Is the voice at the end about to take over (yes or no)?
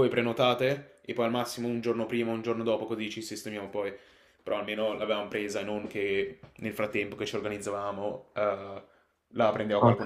yes